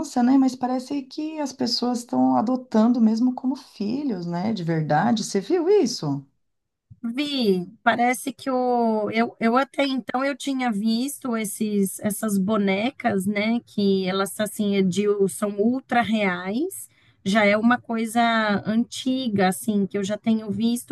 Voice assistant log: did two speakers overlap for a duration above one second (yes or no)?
no